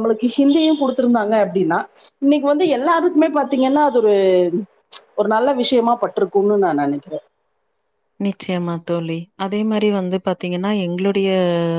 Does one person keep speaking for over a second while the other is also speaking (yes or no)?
no